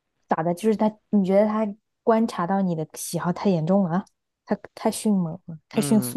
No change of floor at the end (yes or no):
no